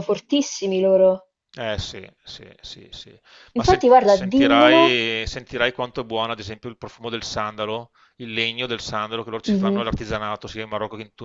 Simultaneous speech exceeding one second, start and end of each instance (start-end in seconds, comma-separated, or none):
3.6-5.0